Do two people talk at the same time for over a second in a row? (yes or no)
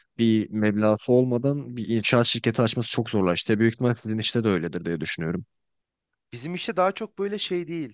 no